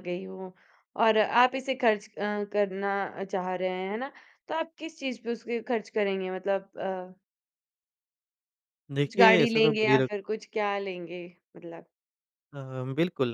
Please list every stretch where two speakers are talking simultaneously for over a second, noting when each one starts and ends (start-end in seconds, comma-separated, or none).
9.0-10.4